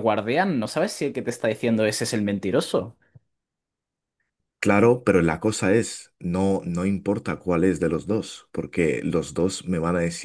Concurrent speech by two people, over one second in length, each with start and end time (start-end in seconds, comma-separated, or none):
none